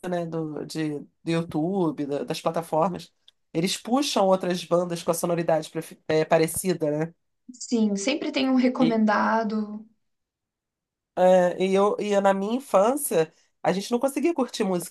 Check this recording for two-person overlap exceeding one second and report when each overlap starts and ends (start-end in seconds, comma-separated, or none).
none